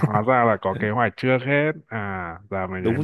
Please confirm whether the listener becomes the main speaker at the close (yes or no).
yes